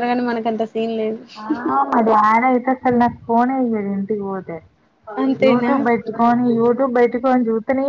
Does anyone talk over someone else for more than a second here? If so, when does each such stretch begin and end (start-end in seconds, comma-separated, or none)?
none